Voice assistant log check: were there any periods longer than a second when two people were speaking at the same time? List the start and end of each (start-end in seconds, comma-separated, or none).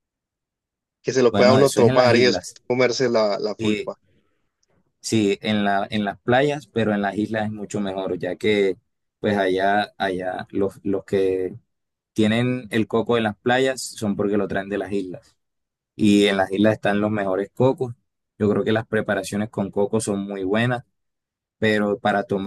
1.3-2.6